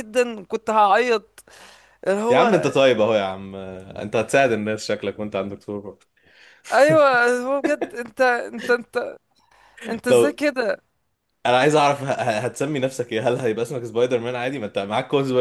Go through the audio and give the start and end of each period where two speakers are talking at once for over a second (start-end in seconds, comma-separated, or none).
none